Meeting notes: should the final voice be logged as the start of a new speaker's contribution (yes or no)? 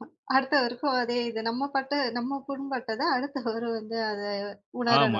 yes